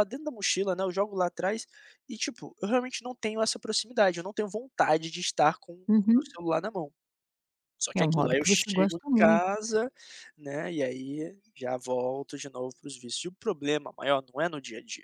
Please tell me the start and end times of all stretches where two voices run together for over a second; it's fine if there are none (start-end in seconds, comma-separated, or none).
8.0-9.4